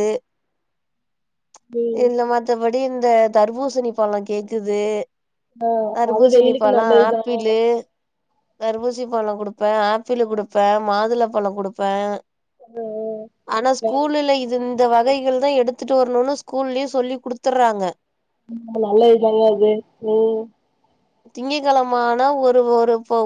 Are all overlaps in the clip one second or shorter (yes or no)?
yes